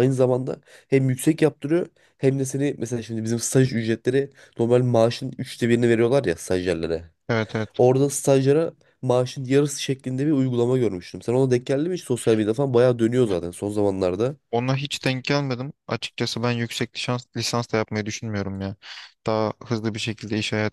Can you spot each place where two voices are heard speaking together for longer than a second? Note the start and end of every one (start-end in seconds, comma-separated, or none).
none